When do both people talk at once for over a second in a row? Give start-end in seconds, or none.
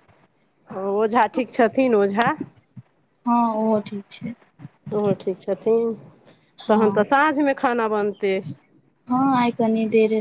none